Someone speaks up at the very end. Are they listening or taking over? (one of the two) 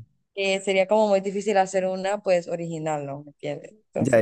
taking over